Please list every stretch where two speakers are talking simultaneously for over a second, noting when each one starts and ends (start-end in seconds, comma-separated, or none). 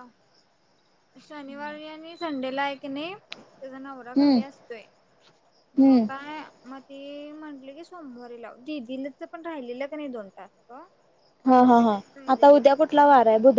none